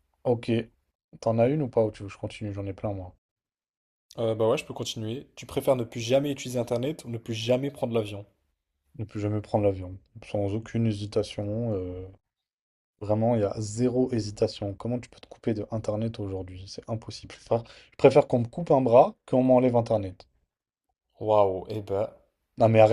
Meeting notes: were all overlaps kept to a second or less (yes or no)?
yes